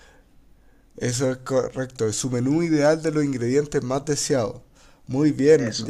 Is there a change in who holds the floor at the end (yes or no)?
no